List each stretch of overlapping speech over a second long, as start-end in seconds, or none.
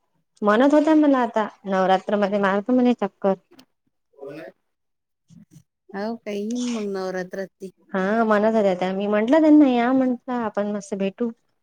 none